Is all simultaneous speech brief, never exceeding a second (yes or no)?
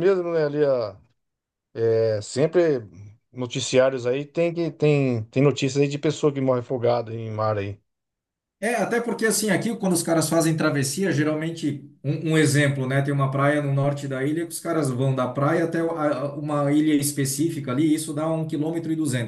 yes